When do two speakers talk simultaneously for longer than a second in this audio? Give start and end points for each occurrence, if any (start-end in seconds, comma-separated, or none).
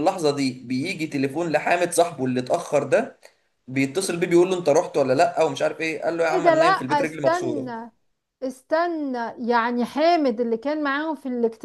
6.3-7.7